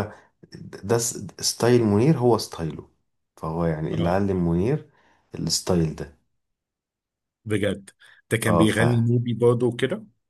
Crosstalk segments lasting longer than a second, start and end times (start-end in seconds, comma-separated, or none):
none